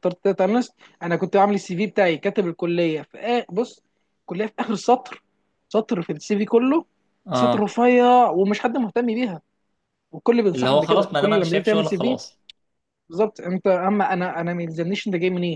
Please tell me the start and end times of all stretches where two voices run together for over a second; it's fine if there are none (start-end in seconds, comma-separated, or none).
10.6-12.2